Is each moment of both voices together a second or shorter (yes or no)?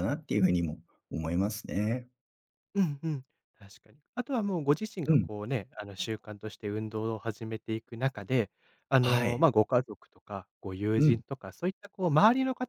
yes